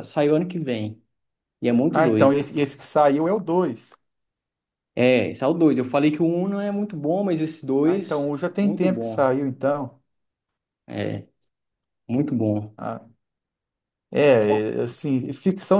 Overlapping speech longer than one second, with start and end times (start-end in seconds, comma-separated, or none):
7.8-9.3